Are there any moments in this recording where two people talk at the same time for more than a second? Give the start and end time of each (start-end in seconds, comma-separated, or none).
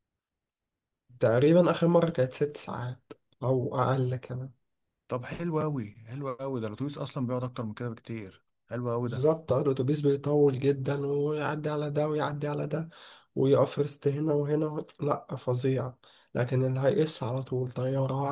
none